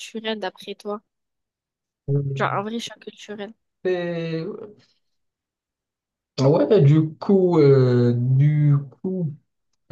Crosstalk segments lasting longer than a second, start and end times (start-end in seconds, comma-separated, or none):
none